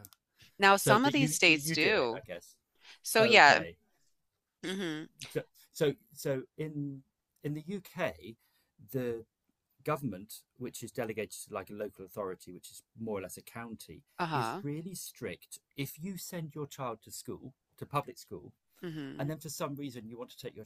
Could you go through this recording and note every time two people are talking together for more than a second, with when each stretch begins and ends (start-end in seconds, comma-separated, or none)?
0.7-2.2